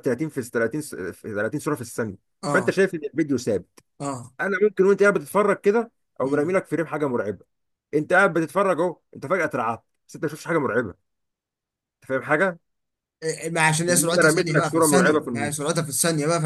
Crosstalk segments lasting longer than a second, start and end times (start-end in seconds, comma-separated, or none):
13.9-15.7